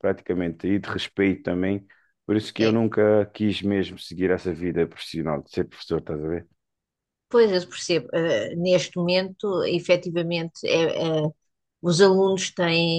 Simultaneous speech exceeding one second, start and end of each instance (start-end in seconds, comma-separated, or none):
none